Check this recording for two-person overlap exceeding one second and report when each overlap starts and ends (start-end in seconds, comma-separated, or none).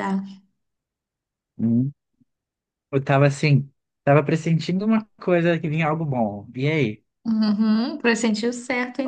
none